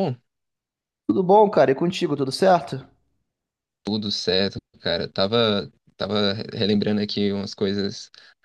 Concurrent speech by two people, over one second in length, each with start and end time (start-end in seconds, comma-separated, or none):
none